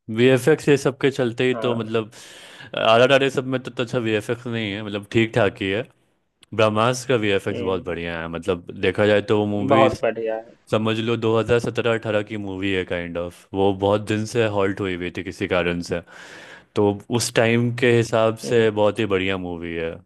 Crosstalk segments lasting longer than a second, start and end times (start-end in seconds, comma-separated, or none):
none